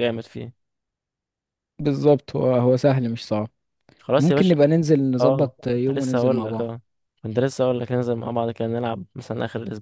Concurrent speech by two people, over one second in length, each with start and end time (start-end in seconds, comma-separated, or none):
5.2-6.7